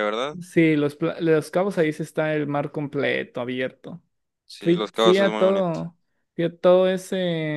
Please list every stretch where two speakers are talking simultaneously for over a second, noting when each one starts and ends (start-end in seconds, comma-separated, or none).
4.6-5.8